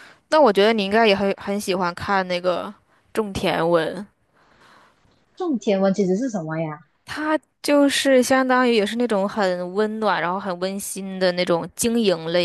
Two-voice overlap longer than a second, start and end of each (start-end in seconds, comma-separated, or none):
none